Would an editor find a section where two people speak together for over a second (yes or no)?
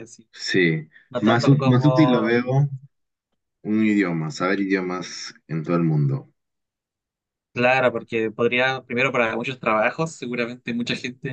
yes